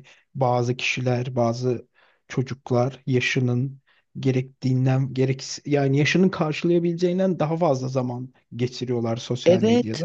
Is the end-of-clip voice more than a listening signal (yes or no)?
yes